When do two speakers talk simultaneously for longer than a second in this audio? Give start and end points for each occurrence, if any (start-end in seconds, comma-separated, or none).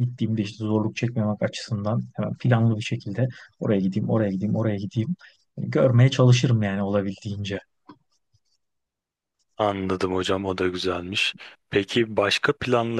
none